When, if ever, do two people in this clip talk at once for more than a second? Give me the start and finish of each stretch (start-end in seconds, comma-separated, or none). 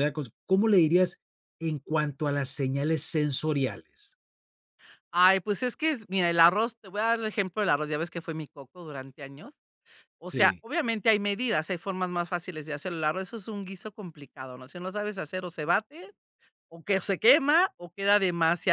none